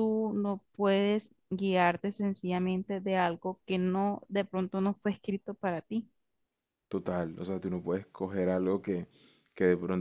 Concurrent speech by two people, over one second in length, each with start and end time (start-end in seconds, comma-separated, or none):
none